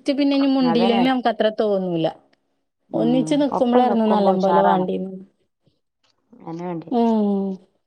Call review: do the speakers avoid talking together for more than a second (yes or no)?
no